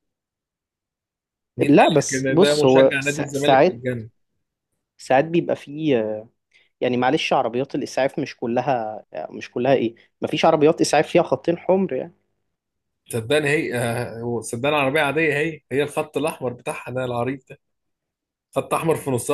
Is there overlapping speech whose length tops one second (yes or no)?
yes